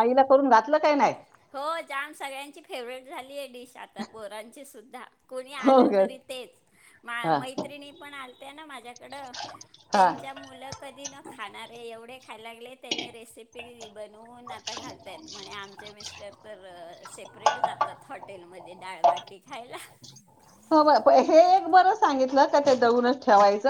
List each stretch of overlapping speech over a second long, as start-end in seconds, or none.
none